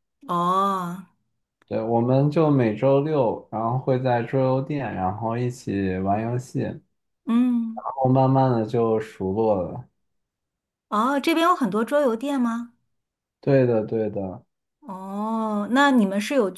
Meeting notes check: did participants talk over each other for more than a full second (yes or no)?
no